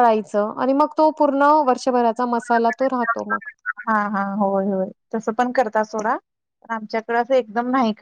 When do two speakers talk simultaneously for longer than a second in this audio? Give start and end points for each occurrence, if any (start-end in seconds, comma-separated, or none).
none